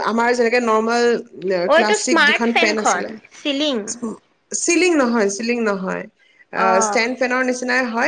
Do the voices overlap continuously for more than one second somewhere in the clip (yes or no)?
yes